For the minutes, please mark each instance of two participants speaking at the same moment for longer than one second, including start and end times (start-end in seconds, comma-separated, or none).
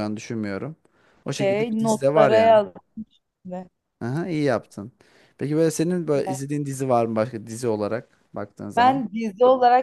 1.3-2.6